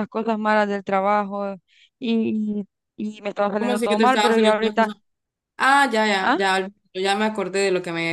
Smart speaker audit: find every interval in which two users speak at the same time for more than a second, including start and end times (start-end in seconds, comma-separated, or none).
3.6-4.9